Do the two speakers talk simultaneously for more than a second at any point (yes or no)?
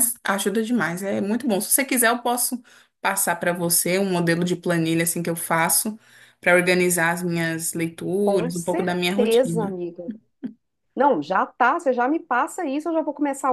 yes